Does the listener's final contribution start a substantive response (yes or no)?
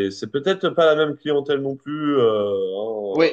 yes